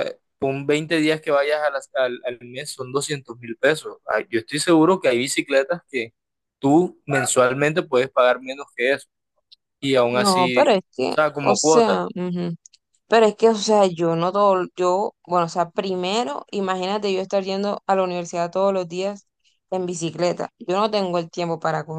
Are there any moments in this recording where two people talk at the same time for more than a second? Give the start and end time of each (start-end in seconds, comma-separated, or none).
10.1-12.0